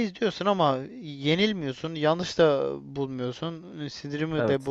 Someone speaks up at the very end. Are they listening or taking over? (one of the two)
listening